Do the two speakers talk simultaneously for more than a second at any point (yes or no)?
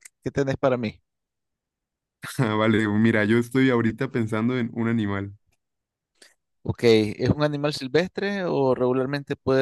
no